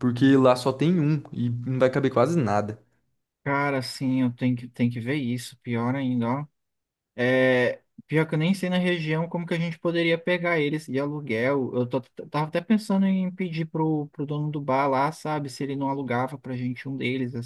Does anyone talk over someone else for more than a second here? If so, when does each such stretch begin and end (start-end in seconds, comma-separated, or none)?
none